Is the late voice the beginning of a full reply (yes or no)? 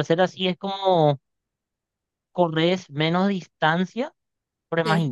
no